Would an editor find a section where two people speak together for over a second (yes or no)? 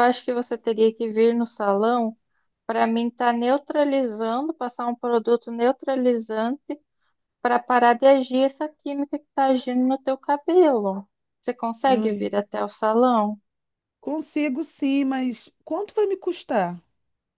no